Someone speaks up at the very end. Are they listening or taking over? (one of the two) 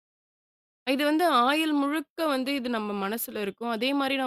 listening